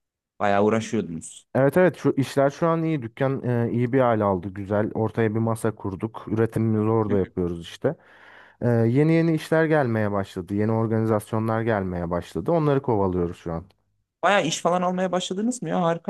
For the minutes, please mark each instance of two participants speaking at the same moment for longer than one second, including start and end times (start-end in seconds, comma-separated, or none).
none